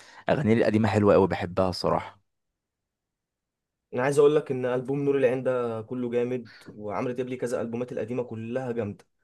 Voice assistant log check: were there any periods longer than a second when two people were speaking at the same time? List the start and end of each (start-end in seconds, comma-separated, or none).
none